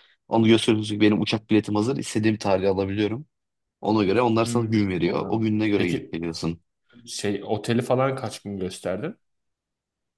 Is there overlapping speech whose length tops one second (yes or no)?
yes